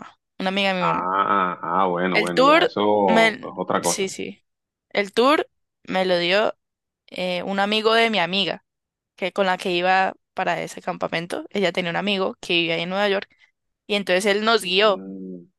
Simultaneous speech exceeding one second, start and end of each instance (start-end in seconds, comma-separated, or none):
2.1-4.1